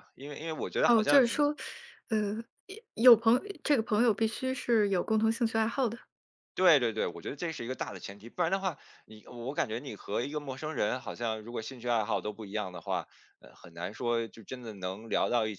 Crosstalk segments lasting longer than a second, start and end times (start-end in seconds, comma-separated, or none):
none